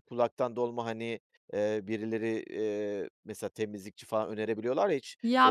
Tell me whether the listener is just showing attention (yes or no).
no